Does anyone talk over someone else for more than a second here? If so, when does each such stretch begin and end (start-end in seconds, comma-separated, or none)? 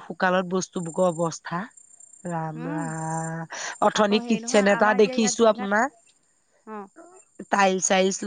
4.0-5.7